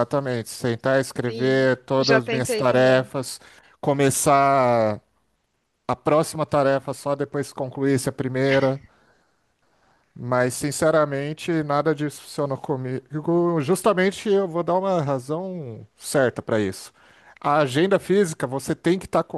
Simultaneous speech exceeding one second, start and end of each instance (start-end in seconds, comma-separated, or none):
1.2-3.1